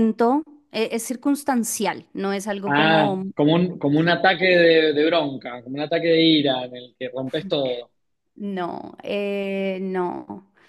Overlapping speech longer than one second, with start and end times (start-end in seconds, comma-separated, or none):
none